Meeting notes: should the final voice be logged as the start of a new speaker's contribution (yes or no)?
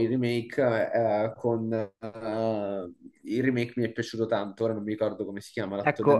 yes